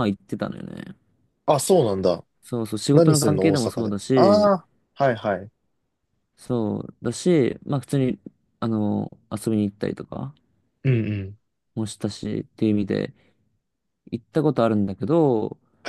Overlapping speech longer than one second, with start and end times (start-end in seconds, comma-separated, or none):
2.9-4.5